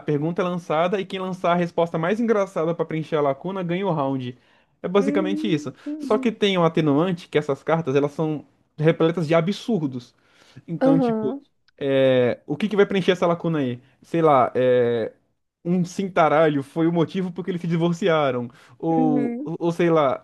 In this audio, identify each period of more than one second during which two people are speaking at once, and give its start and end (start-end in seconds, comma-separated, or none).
5.0-6.3